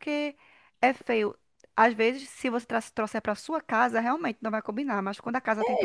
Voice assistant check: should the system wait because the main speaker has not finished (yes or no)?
no